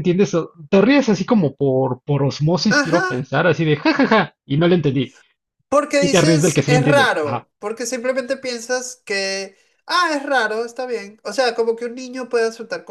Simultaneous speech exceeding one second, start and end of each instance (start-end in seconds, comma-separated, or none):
6.0-7.5